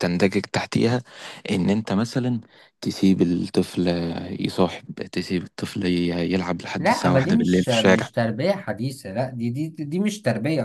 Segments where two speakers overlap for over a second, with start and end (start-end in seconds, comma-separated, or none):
6.8-8.1